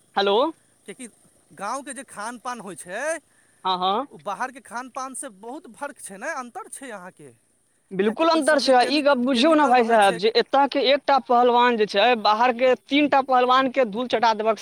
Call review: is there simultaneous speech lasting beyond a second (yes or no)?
yes